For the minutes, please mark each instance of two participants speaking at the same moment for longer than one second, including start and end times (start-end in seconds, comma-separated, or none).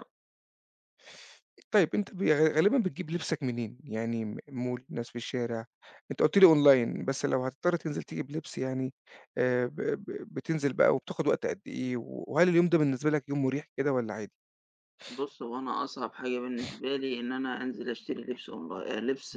none